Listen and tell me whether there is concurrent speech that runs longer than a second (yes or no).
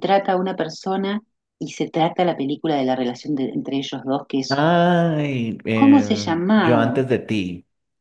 yes